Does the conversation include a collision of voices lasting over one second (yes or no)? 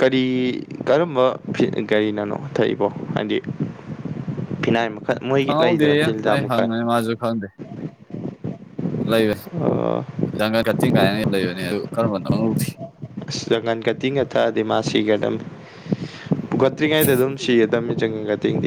no